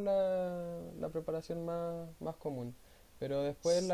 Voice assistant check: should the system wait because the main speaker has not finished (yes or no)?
yes